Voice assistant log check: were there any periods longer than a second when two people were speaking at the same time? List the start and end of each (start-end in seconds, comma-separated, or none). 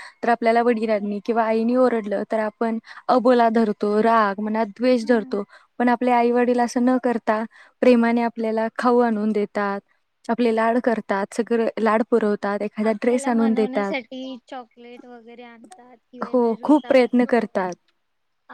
16.3-17.6